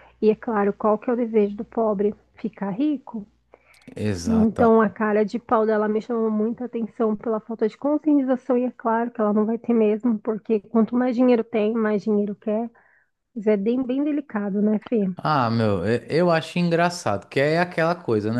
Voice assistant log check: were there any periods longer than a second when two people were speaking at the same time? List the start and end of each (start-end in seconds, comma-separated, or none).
none